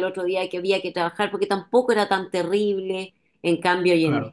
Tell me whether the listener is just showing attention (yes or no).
yes